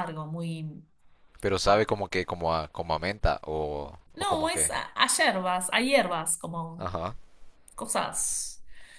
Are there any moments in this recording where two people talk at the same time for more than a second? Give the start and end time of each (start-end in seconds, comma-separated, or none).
none